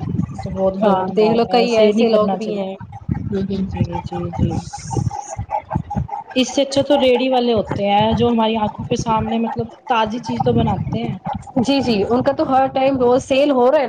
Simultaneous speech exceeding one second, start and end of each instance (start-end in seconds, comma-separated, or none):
0.8-2.8